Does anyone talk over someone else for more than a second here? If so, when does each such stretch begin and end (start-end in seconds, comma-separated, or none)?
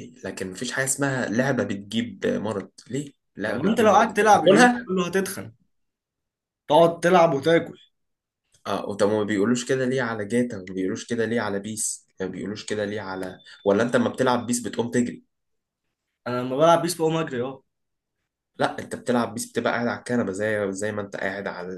3.4-4.9